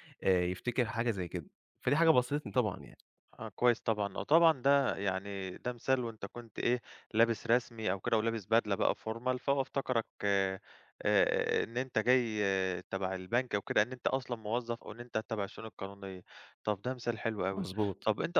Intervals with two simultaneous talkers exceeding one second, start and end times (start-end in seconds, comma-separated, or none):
none